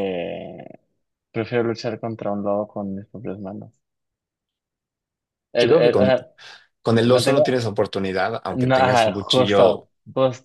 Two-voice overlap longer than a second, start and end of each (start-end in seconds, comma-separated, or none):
8.6-9.9